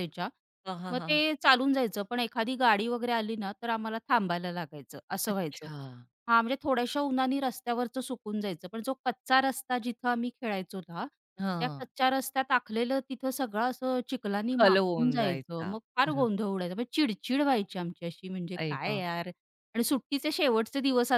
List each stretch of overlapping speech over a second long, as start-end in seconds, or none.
14.5-16.3